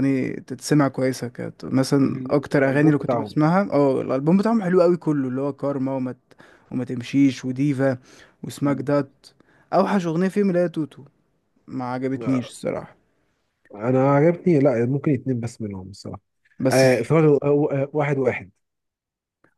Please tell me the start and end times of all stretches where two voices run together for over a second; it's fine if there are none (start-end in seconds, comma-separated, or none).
2.0-3.4